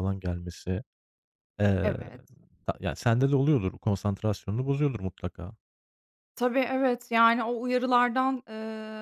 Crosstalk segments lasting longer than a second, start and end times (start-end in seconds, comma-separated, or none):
none